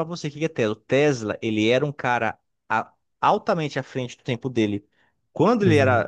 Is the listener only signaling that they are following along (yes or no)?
yes